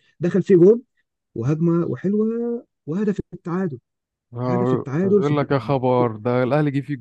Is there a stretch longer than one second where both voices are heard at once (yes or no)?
yes